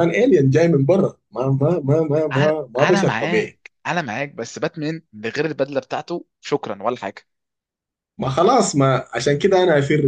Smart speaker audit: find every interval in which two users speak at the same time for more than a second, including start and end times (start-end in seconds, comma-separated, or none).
2.3-3.6